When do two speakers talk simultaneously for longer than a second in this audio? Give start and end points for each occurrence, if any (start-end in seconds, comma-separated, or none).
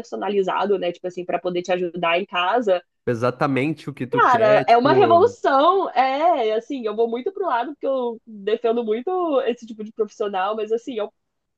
4.1-5.3